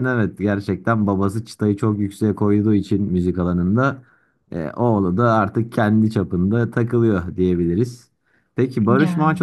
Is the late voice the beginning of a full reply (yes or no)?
no